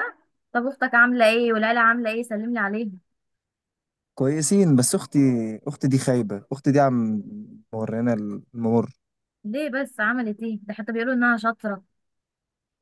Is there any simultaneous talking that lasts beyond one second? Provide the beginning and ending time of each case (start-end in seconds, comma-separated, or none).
none